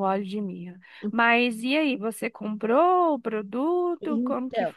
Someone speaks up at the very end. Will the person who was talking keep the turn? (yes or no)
no